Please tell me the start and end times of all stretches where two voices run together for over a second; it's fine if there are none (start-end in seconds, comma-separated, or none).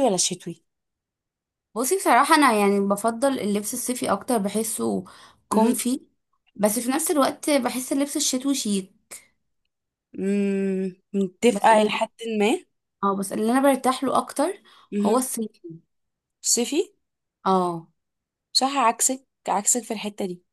none